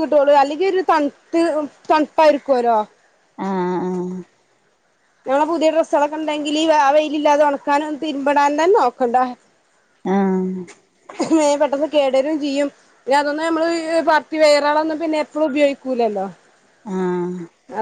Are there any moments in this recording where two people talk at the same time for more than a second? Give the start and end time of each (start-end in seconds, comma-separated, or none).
none